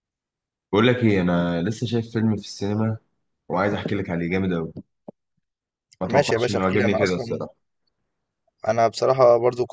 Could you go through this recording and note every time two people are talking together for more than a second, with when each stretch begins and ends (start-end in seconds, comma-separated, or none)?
6.1-7.5